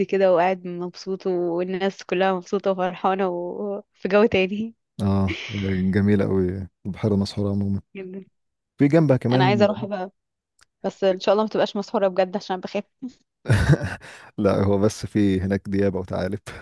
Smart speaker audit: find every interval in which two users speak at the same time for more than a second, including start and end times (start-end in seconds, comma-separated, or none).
none